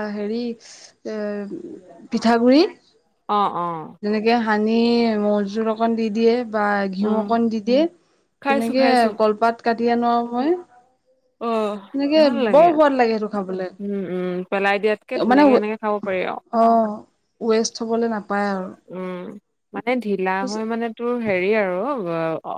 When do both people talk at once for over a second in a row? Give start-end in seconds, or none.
none